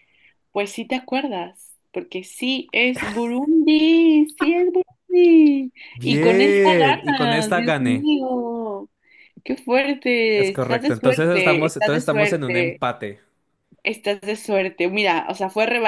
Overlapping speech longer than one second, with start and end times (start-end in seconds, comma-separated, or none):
5.9-8.1, 10.4-12.8